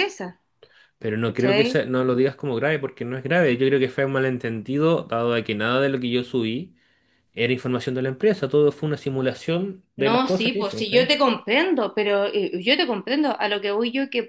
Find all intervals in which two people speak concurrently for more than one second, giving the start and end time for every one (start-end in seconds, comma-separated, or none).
9.9-11.2